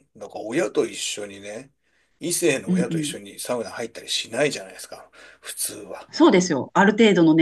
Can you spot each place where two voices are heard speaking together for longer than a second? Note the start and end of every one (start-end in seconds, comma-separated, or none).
none